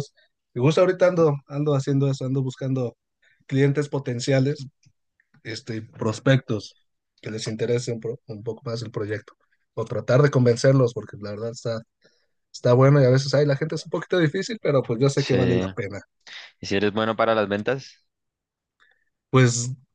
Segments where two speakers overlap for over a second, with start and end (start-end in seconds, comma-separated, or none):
none